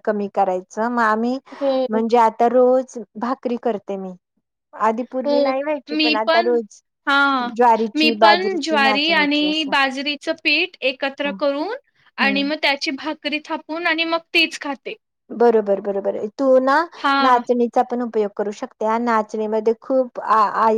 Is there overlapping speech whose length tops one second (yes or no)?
yes